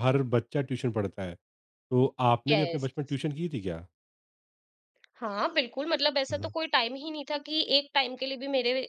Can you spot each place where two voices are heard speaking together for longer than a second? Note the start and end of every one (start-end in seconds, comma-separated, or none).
none